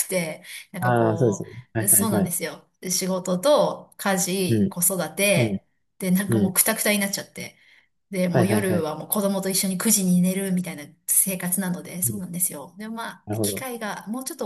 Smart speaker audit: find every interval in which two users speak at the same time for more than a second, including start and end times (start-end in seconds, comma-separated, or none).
0.8-2.3